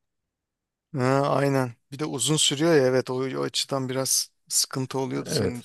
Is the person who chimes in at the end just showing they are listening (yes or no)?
no